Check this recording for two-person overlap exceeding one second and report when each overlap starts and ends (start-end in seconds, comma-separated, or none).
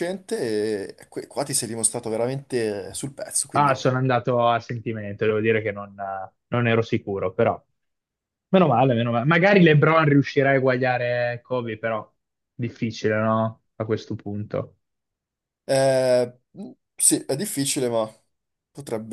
none